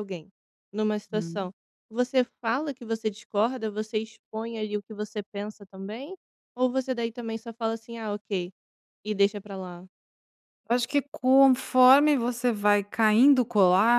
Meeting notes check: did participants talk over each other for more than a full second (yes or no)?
no